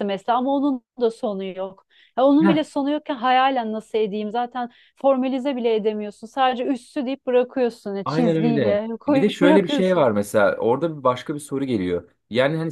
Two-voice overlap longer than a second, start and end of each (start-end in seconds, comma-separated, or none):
8.1-10.1